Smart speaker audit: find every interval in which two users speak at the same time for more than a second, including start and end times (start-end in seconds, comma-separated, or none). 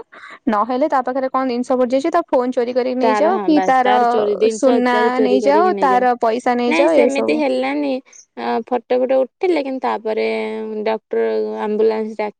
4.6-7.4